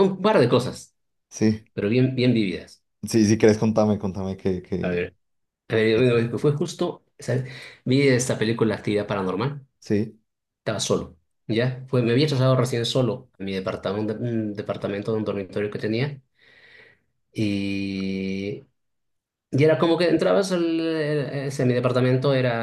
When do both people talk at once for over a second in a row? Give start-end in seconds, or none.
none